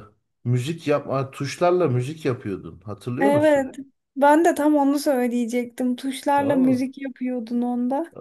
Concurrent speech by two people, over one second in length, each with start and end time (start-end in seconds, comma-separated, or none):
none